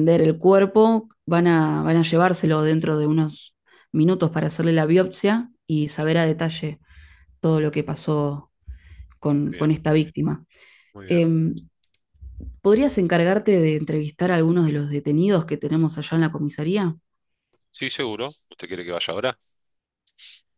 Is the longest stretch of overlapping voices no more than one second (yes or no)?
yes